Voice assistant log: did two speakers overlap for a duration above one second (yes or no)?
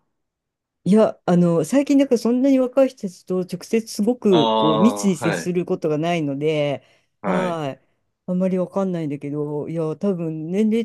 yes